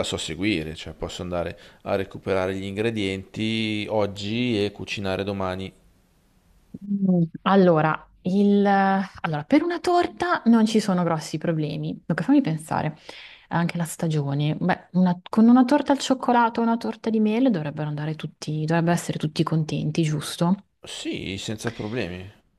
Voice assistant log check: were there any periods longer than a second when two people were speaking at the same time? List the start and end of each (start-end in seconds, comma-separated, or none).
none